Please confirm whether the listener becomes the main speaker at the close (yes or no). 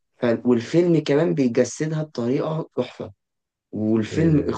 no